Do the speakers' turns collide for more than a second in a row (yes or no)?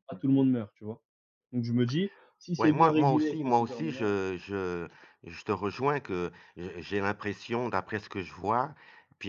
yes